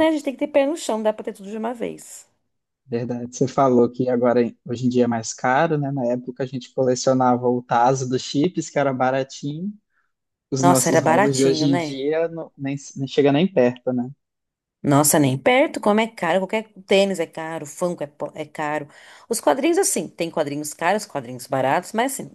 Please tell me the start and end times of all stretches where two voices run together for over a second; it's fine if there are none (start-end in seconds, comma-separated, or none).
10.6-12.0